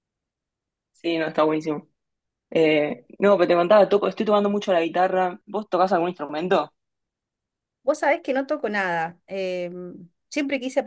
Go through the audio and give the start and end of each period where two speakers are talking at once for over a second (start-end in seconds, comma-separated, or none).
none